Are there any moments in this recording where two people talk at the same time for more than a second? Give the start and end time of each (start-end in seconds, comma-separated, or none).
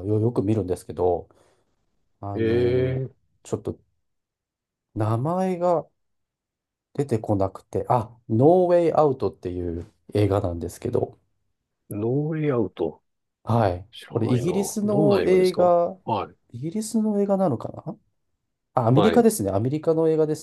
13.9-16.0